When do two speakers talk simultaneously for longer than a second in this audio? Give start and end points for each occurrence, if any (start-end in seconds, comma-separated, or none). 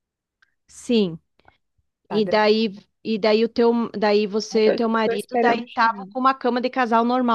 4.5-6.1